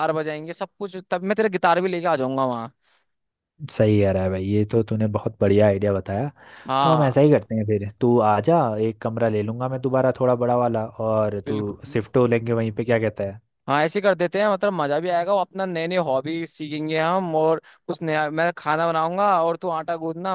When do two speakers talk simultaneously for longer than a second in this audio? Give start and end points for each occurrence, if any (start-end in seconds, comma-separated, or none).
none